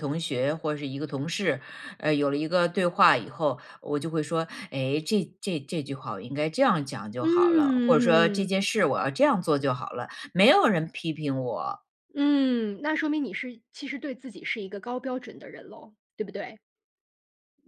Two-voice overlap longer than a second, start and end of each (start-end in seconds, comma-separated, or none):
7.2-8.5